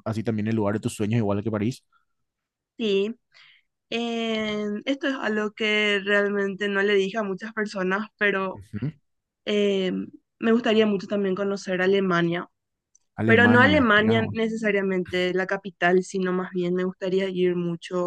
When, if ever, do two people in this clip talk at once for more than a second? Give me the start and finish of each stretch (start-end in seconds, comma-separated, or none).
13.2-14.5